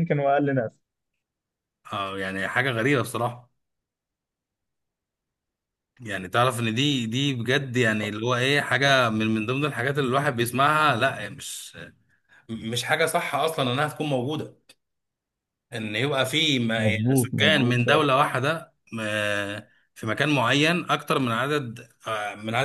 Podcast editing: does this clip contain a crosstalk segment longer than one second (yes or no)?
yes